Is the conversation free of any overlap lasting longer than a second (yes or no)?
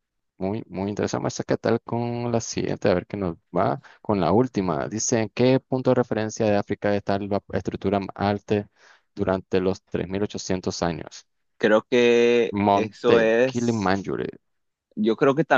no